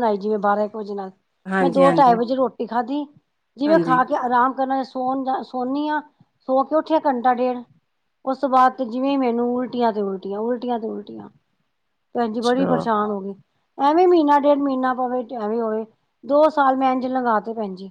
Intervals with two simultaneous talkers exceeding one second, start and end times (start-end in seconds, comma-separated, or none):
none